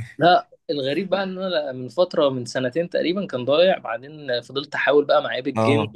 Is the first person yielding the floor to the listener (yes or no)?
no